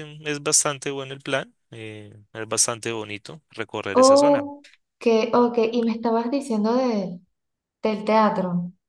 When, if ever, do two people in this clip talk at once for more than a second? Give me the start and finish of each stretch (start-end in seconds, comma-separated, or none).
none